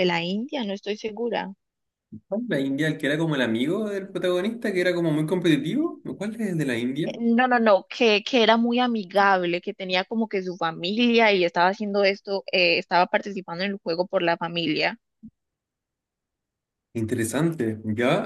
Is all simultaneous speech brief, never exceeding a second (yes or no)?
yes